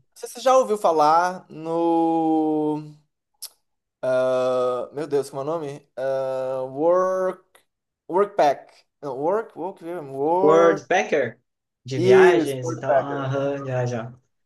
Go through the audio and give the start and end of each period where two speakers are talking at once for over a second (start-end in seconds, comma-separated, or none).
11.9-13.3